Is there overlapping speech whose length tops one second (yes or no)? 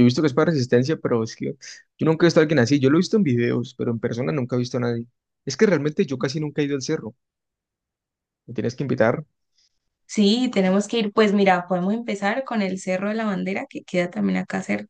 no